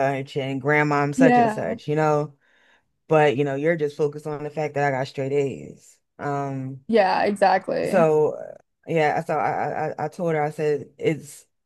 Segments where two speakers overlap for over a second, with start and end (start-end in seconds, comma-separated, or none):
none